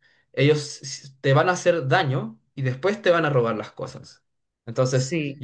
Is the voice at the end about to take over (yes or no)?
no